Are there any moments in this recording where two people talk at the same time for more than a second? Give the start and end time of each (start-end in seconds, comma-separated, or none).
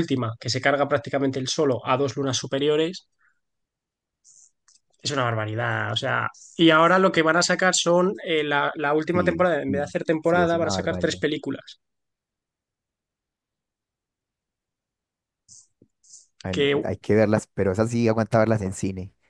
9.1-11.2